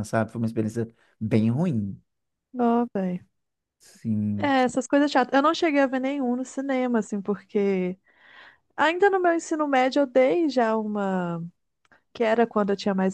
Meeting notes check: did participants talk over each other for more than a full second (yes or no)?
no